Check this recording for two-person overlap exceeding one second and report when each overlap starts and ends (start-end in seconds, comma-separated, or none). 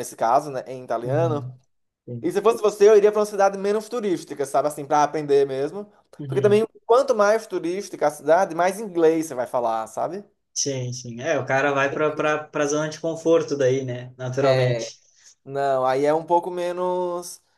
none